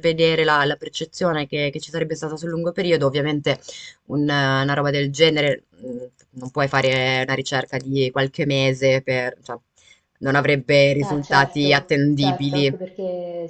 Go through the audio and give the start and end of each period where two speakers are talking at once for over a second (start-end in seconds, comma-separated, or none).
11.0-12.8